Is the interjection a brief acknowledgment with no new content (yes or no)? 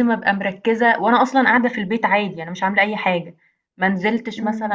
yes